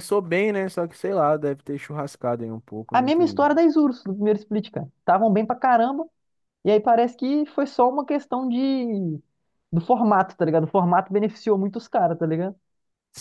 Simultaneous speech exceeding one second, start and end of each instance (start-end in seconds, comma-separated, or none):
none